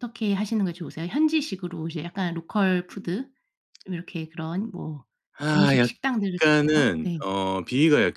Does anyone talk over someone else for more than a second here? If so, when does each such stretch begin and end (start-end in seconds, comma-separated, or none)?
5.5-7.2